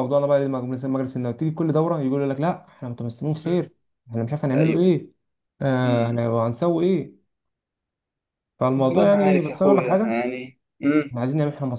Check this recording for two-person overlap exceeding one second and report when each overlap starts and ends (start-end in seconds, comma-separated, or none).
8.8-10.2